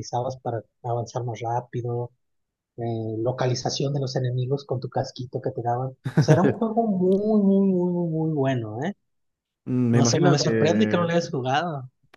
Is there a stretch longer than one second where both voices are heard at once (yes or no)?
yes